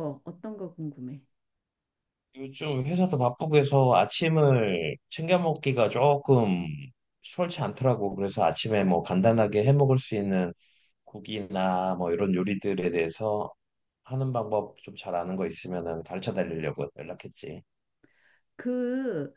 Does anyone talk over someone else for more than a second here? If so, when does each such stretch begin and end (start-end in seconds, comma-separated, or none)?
none